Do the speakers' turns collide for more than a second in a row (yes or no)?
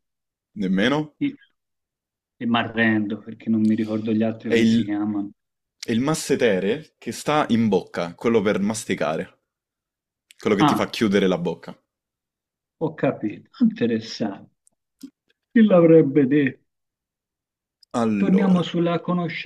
no